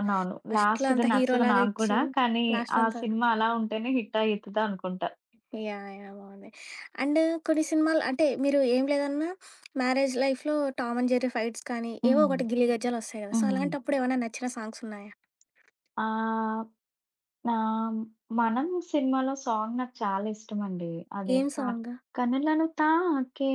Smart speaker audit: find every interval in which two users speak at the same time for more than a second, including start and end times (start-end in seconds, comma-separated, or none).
0.5-2.0